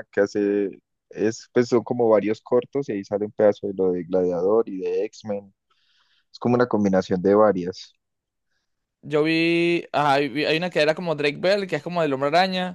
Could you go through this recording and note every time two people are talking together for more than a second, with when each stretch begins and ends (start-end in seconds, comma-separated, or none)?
none